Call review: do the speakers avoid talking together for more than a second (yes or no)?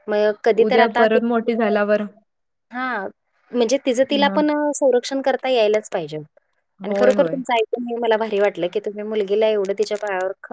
yes